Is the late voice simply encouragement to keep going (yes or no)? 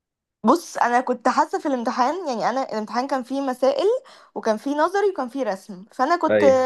yes